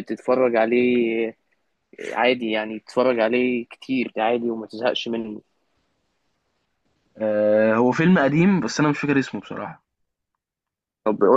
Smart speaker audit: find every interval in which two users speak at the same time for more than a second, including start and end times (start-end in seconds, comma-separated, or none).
none